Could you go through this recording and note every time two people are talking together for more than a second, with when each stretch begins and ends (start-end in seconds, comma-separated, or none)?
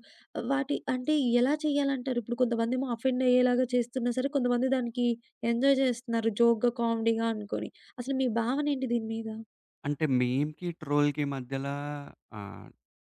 none